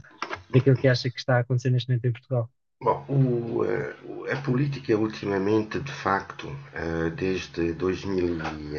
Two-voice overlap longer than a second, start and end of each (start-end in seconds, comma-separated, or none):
none